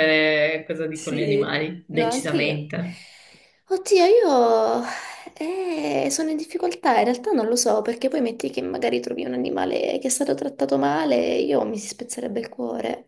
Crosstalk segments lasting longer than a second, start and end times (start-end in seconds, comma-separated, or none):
0.9-2.7